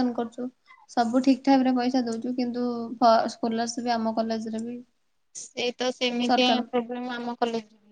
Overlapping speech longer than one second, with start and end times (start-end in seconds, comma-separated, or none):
none